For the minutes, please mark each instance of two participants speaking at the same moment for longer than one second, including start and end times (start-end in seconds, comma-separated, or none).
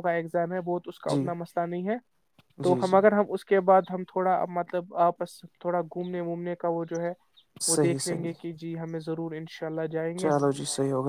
none